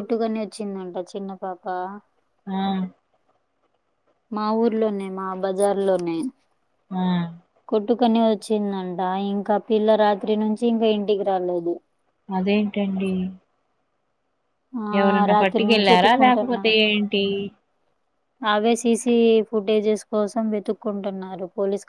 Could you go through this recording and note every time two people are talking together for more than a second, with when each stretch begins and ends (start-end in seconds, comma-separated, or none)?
15.0-17.0